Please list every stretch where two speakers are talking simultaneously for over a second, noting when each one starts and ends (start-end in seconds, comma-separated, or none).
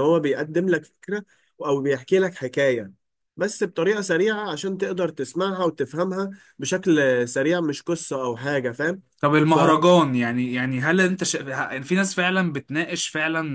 none